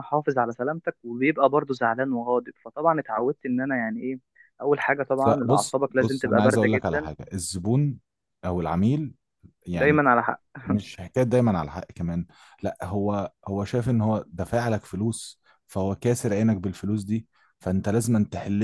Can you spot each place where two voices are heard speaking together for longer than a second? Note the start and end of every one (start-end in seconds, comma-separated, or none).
5.3-7.1